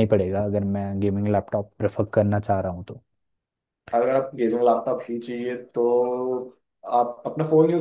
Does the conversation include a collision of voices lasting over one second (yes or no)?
no